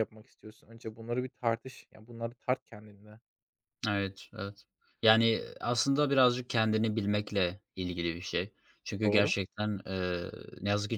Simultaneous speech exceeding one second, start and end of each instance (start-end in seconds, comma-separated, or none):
none